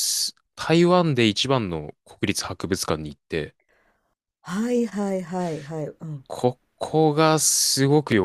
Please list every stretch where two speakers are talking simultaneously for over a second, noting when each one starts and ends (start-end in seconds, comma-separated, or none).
none